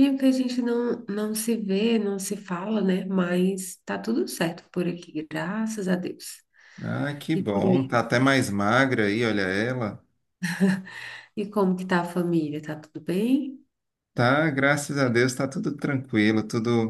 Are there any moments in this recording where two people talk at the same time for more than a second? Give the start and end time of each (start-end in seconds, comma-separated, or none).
none